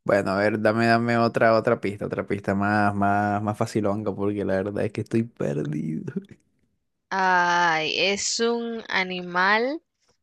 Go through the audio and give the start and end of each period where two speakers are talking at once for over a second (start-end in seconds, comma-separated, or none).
none